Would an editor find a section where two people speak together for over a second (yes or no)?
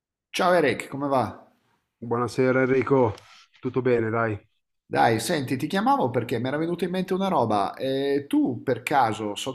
no